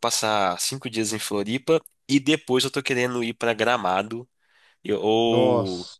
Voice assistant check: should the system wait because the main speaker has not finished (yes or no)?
yes